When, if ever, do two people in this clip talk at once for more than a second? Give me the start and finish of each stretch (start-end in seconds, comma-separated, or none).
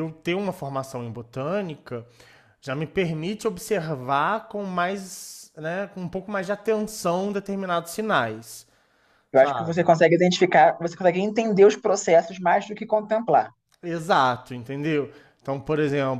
none